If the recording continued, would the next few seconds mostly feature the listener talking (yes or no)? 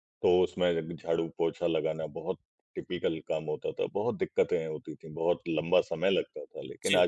no